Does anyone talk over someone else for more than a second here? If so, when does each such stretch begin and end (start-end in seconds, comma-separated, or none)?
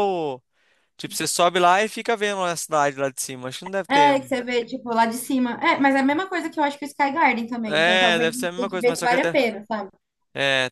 7.7-9.4